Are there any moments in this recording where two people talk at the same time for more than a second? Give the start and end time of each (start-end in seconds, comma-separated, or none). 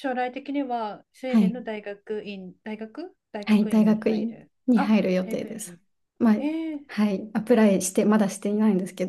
3.5-5.8